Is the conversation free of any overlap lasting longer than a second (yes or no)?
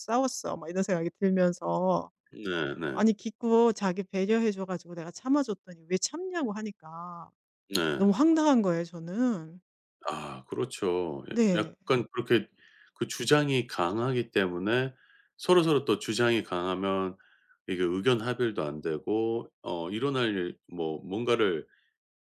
yes